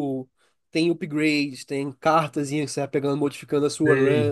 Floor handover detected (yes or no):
no